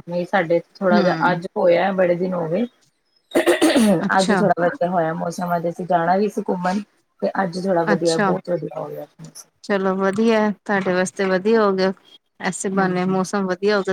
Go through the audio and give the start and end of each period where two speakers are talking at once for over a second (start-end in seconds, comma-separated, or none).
none